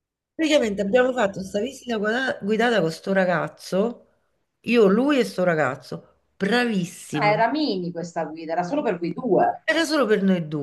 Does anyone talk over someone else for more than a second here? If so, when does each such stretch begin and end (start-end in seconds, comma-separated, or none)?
none